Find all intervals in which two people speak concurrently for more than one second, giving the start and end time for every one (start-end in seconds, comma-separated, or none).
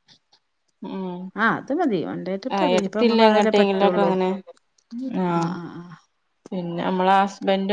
2.6-4.1